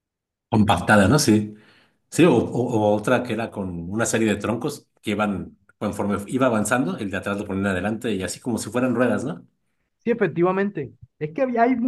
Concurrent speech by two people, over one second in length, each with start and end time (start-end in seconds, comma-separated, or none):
none